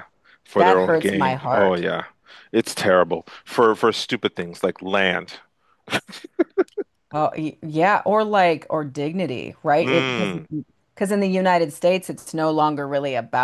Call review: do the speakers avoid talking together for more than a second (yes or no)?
no